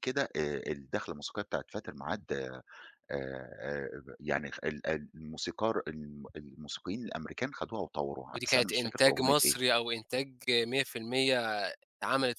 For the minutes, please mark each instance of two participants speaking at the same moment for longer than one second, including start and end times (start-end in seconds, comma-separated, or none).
8.3-9.6